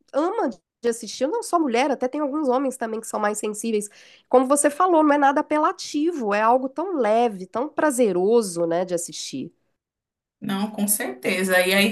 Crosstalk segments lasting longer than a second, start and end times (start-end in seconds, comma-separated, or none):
none